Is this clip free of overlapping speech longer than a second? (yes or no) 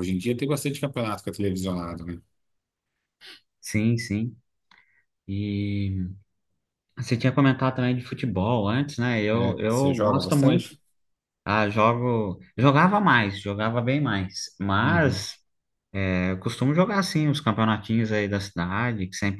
no